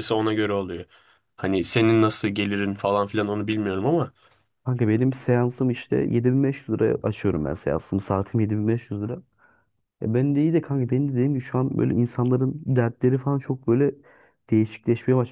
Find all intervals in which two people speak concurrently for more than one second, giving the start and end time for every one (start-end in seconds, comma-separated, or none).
none